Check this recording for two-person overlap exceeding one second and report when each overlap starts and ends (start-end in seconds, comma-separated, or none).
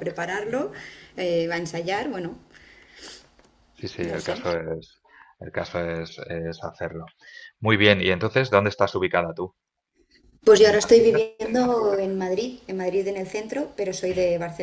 none